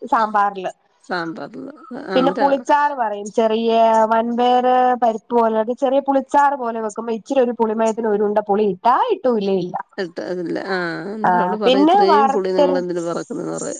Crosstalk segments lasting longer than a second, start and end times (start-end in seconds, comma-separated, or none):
11.7-13.0